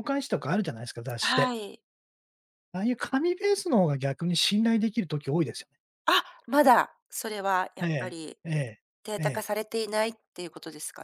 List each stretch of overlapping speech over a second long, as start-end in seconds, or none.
none